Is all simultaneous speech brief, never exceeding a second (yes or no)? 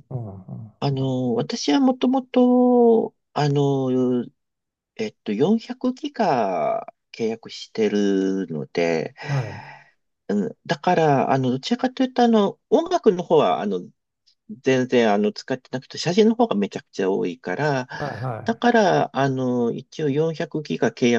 yes